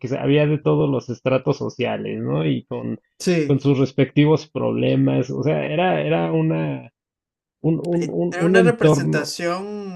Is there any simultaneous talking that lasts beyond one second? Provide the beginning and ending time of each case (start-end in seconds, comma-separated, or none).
8.0-9.3